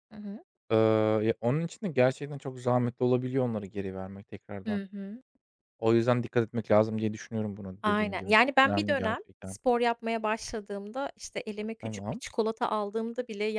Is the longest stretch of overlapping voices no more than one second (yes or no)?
no